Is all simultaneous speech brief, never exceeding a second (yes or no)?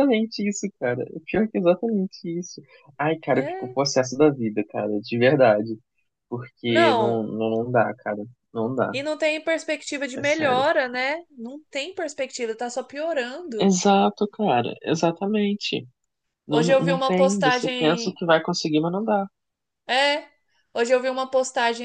no